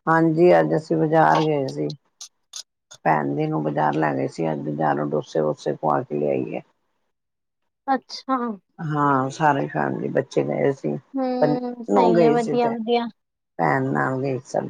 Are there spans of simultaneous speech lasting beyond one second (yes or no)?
yes